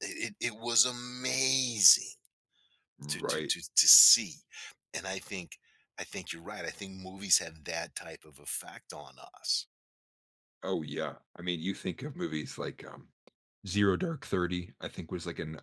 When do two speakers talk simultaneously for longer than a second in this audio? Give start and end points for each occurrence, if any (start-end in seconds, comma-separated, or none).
none